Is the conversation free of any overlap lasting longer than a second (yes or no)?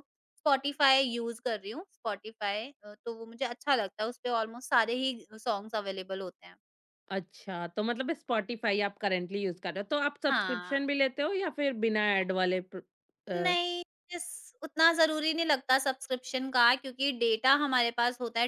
yes